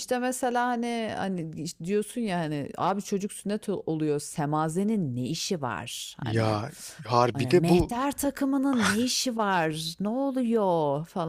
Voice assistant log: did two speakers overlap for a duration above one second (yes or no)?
no